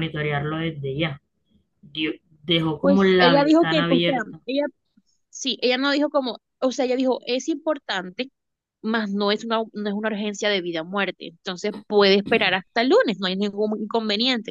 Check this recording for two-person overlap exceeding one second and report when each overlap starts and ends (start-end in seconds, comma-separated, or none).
2.8-4.4